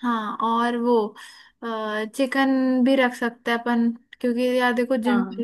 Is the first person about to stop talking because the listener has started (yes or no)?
no